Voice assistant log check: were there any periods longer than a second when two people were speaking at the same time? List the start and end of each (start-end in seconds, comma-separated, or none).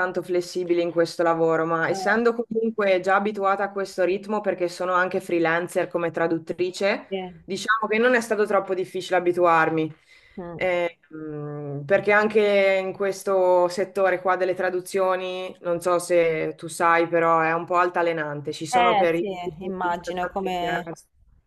18.7-20.9